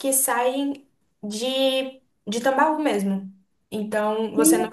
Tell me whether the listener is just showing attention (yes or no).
yes